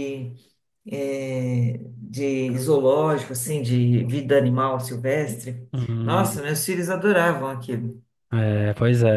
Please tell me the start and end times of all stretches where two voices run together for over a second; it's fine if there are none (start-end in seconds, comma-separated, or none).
none